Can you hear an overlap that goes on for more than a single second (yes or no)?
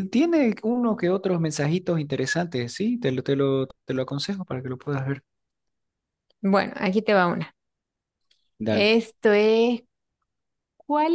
no